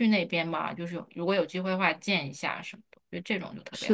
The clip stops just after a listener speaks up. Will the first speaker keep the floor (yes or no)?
no